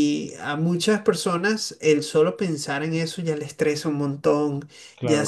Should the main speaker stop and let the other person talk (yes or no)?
no